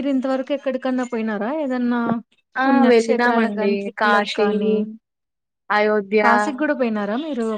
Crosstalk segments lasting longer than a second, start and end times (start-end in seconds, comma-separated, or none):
2.6-4.5